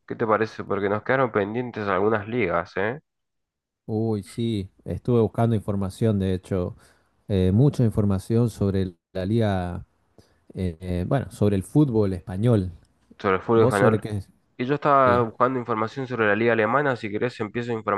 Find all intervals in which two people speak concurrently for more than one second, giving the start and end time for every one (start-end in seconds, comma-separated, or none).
none